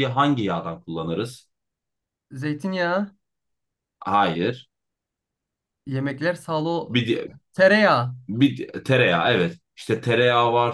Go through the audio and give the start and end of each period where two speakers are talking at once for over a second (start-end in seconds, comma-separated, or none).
none